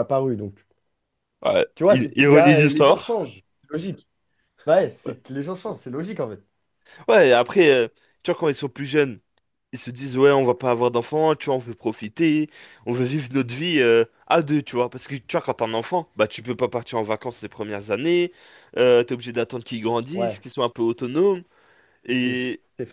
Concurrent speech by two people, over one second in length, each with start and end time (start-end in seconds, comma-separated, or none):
1.8-3.1